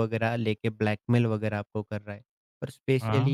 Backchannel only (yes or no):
yes